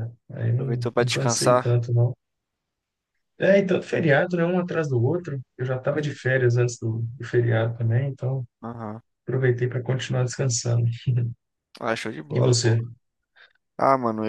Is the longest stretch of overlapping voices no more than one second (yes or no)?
no